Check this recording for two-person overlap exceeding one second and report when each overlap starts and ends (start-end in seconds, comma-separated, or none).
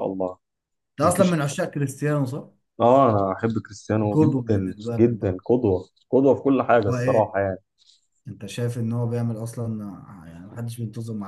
4.0-5.4